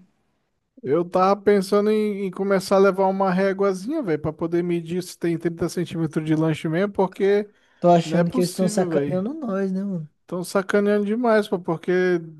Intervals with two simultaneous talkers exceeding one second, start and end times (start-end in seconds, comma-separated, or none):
8.0-9.2